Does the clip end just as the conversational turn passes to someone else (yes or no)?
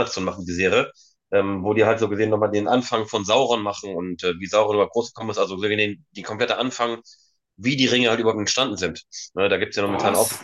no